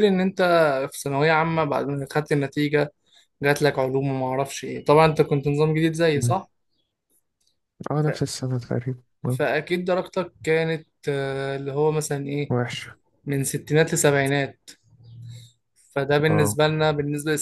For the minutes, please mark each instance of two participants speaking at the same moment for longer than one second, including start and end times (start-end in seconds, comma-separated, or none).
none